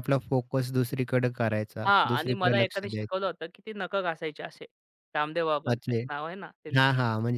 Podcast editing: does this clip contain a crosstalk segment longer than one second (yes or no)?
yes